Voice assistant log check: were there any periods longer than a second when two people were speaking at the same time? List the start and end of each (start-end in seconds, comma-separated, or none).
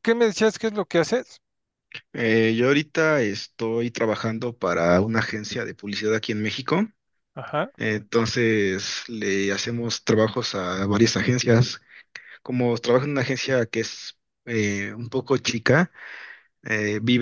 none